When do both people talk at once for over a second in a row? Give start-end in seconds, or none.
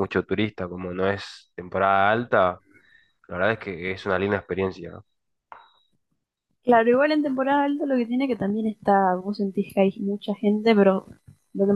none